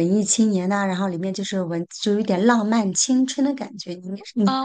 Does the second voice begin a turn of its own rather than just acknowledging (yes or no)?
yes